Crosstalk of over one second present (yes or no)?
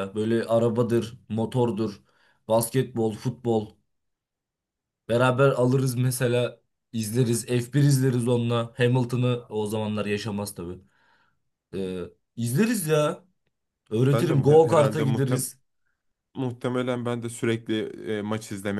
yes